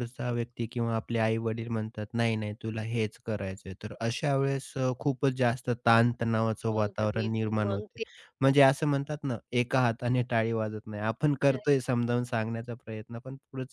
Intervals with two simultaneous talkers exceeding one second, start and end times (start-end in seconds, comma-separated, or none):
6.7-8.0